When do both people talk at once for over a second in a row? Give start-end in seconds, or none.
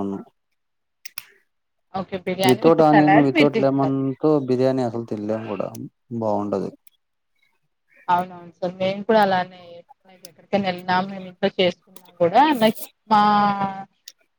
2.5-4.0